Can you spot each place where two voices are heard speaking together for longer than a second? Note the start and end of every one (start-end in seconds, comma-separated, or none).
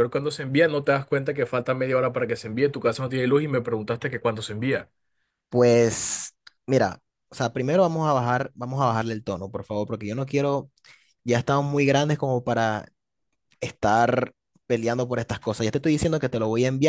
none